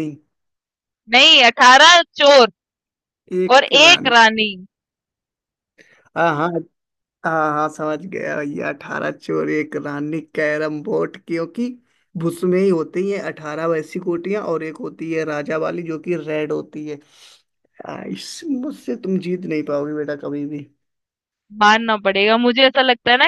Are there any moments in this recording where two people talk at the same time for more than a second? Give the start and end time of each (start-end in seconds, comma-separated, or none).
none